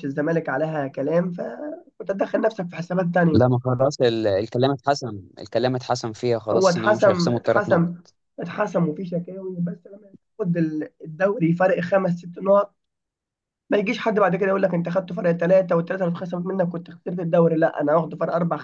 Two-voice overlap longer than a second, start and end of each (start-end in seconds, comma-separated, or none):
6.5-7.9